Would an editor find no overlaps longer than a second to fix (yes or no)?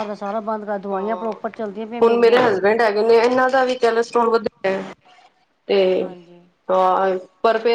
yes